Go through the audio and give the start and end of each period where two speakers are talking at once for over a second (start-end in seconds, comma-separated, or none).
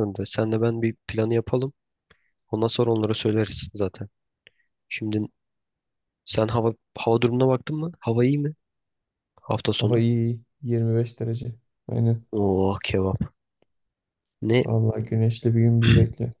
none